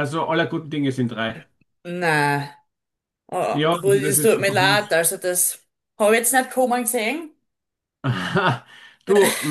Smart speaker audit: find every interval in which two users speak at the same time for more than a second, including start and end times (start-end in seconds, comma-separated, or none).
3.5-4.9